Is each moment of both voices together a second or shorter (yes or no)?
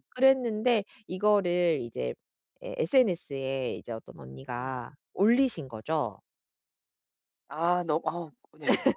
yes